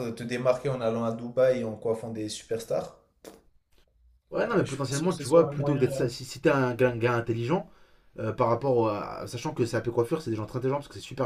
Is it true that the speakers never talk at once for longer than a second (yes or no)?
no